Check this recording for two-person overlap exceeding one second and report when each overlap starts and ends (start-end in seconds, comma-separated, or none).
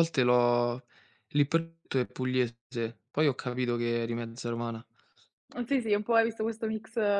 none